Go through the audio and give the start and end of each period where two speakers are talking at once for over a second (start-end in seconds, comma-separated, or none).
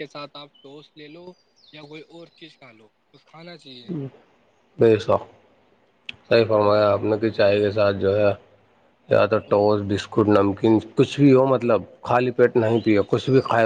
none